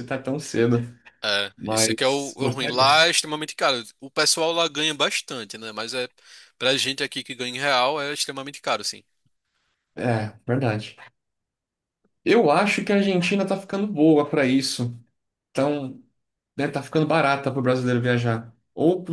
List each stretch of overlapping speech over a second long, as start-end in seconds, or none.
1.6-2.9